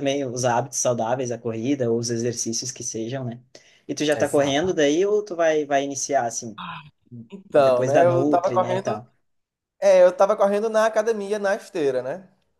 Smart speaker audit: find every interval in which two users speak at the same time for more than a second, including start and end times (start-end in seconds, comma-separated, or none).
7.5-9.0